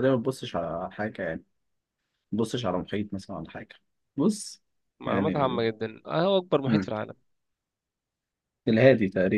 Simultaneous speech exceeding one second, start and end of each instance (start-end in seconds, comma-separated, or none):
none